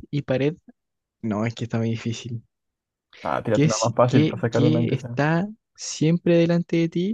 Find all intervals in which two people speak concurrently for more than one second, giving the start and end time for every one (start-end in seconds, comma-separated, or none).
3.5-5.2